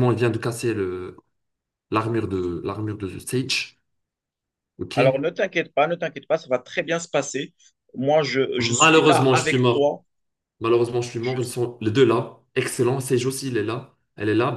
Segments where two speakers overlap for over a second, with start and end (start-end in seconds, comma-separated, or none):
8.6-9.8